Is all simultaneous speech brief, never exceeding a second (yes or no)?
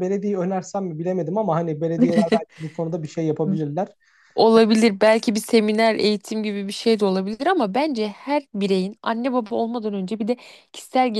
yes